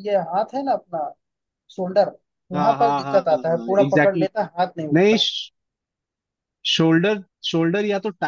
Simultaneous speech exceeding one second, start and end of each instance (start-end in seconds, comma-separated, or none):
2.5-4.3